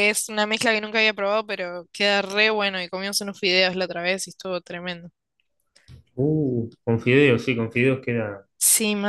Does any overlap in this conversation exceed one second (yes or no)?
no